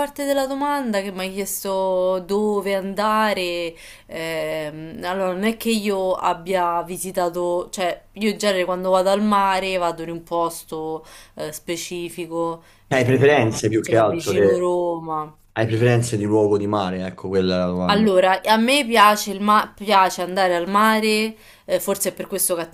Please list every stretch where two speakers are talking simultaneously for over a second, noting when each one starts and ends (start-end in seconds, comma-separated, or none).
12.9-14.7